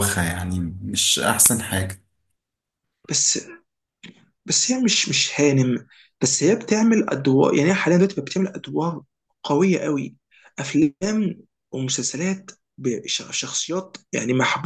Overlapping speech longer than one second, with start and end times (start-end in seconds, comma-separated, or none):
none